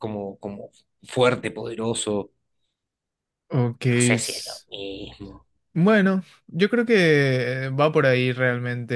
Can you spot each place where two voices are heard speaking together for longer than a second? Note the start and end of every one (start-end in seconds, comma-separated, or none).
none